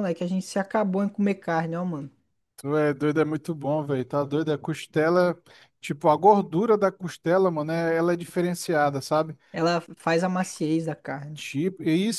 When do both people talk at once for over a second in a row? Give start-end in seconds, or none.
none